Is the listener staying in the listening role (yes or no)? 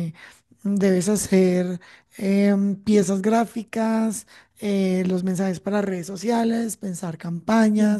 yes